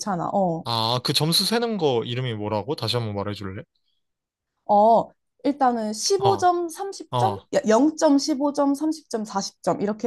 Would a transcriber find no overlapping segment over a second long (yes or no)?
yes